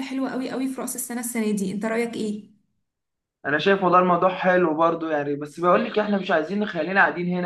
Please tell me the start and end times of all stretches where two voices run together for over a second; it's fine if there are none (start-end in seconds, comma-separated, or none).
none